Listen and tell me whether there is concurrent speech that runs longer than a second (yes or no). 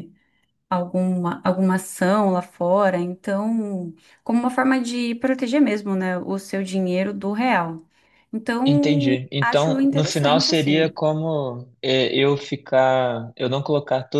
yes